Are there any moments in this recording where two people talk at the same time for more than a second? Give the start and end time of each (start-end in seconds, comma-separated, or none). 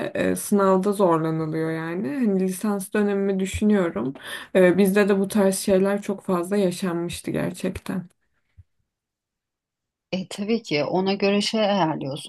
none